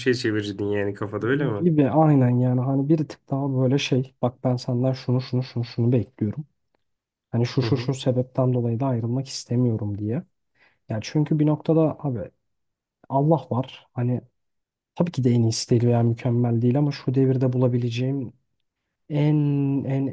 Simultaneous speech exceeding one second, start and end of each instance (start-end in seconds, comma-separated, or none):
none